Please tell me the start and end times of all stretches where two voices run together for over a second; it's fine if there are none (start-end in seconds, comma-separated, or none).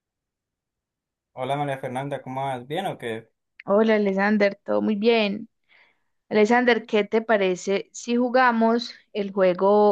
none